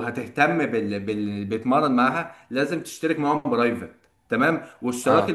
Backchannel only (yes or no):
yes